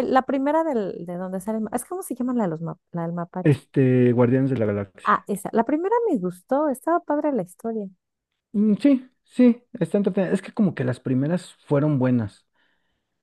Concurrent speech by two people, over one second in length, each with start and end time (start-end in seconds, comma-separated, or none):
none